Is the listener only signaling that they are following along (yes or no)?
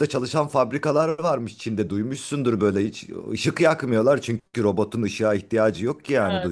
no